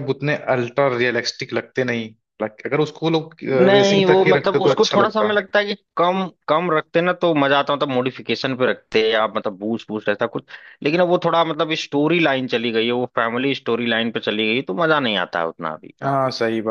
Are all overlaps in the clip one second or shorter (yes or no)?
no